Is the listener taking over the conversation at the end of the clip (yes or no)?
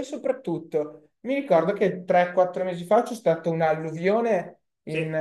no